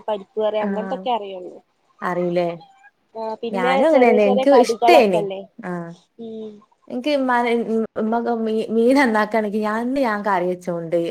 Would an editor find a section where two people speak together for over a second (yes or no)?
yes